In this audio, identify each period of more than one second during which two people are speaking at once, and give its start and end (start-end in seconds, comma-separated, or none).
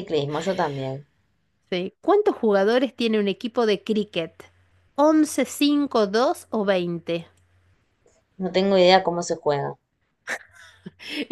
none